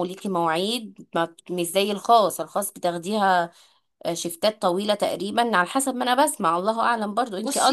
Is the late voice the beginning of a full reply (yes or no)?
yes